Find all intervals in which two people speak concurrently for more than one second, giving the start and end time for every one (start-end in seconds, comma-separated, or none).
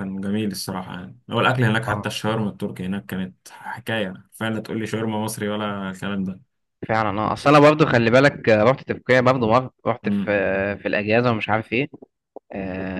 none